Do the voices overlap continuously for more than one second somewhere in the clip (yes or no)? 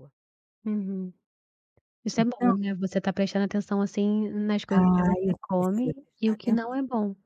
yes